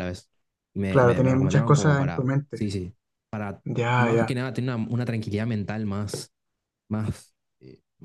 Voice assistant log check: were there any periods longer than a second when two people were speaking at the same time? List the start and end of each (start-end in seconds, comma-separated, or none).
0.9-2.6